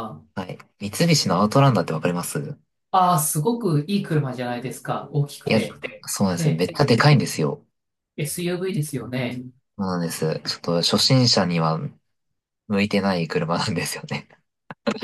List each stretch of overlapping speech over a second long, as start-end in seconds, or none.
none